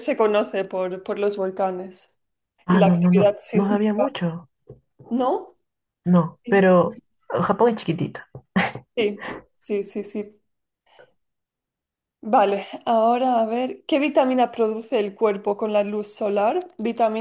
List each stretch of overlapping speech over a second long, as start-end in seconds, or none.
2.7-4.1